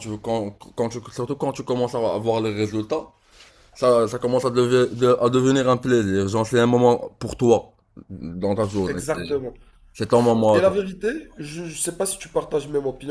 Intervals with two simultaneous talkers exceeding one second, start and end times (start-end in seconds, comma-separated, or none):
none